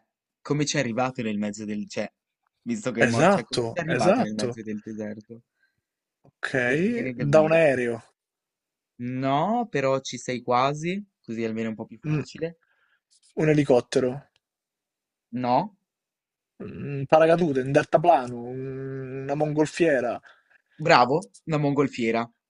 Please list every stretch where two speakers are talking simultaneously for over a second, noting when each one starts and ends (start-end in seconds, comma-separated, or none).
3.1-4.6